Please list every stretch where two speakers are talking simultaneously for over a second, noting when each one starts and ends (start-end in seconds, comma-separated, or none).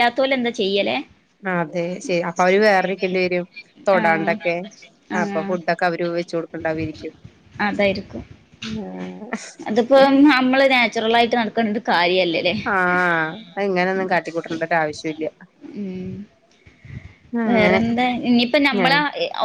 none